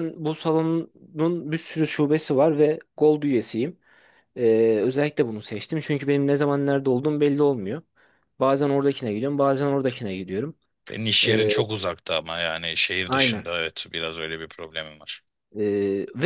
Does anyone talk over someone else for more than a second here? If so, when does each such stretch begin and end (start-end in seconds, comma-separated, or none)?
none